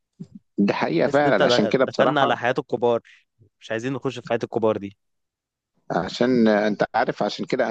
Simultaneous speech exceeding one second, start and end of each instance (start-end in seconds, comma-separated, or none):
1.0-2.4